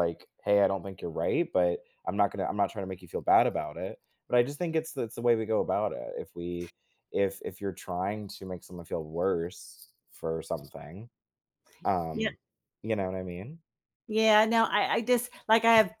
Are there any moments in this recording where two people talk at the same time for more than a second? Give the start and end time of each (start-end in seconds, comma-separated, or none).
none